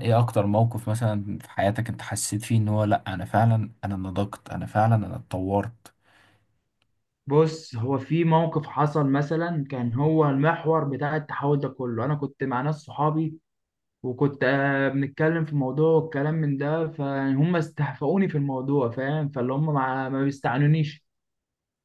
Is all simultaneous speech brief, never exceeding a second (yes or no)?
yes